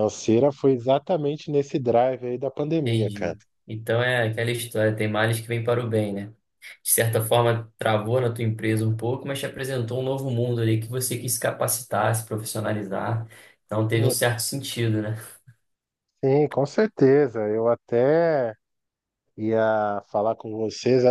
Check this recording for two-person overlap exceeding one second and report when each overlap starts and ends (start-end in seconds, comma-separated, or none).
none